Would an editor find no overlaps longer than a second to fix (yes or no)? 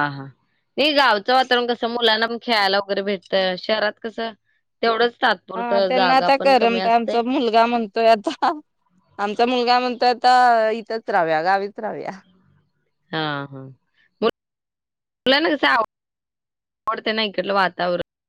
no